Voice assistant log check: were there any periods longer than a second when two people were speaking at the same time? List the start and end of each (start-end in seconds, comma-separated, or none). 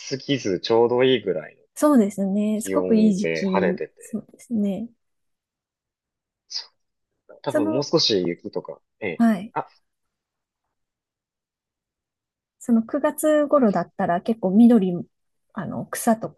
2.6-4.2